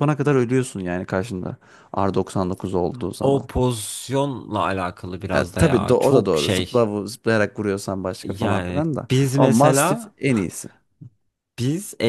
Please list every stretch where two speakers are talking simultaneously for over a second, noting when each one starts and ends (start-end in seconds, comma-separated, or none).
5.3-6.9, 8.2-10.2